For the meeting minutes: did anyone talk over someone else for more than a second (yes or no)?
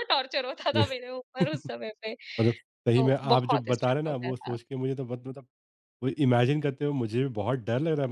yes